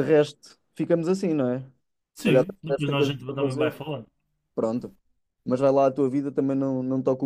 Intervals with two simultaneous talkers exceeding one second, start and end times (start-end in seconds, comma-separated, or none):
2.1-3.8